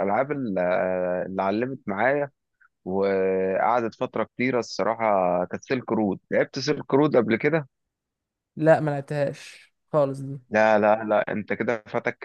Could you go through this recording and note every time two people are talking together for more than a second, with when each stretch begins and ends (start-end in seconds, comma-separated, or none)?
none